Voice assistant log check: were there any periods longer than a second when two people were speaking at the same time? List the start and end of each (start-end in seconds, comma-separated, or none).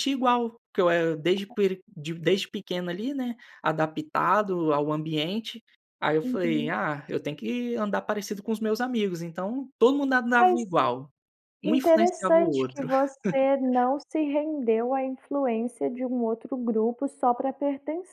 11.6-12.9